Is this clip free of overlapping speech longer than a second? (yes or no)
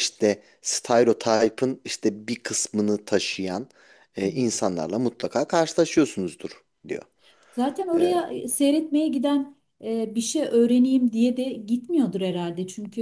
yes